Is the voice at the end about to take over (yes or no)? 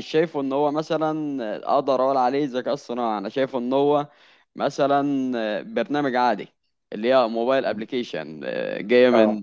no